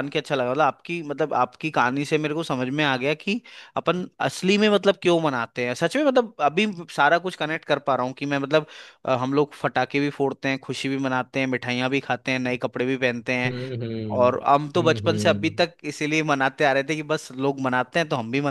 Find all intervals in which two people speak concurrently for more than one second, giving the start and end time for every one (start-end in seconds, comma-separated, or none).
14.2-15.7